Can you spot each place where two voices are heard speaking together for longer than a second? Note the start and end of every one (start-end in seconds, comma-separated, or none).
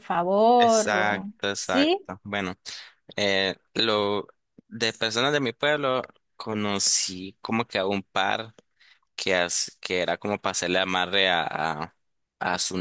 0.6-2.0